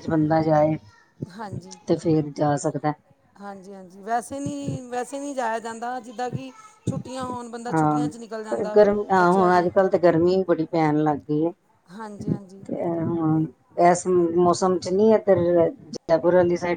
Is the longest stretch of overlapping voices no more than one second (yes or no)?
yes